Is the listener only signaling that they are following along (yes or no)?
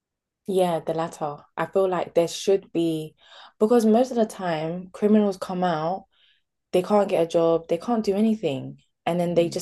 yes